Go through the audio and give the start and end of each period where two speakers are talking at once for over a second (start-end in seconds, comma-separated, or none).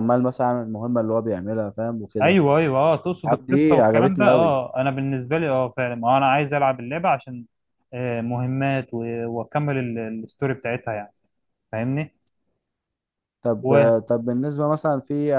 3.3-4.6